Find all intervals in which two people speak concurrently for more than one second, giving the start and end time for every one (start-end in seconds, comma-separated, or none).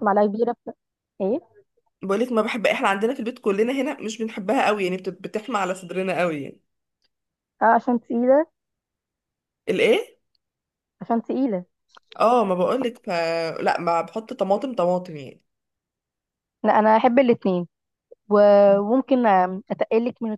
none